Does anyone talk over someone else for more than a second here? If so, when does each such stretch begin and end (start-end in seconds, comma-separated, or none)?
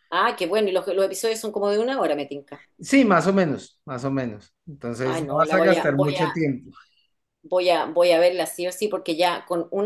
5.0-6.4